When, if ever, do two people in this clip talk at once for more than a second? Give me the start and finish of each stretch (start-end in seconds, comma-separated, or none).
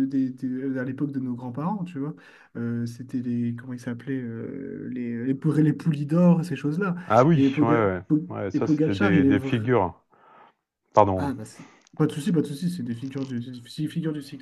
7.3-9.6